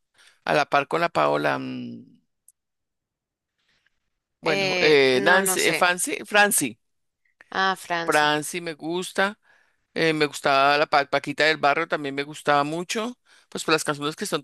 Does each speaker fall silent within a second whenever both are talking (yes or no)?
no